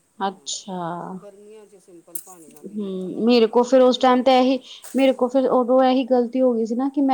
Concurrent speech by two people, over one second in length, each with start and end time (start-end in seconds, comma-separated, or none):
2.8-4.6